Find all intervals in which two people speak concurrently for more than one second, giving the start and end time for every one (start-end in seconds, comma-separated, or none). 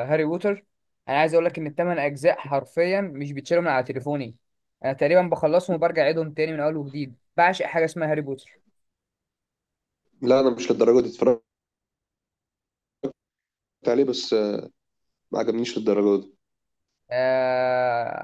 none